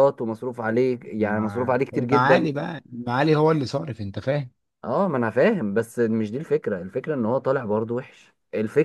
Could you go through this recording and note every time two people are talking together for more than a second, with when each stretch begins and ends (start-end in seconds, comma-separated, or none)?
1.2-2.5